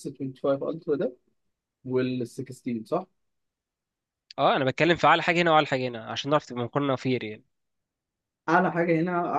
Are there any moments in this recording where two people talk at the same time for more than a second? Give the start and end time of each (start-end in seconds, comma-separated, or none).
none